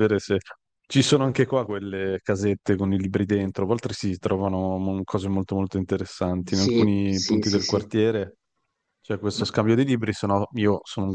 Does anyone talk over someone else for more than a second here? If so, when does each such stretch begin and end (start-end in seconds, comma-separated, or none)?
6.5-7.9